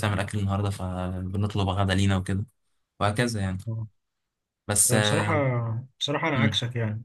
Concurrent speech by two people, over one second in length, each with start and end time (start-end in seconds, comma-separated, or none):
none